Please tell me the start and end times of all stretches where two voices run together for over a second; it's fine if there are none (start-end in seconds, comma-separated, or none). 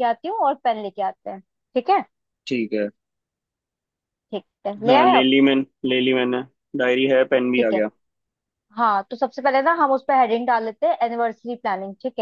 none